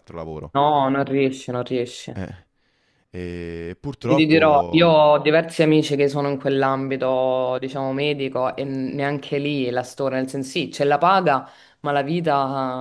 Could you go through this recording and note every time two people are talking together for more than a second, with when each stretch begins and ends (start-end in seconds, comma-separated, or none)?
none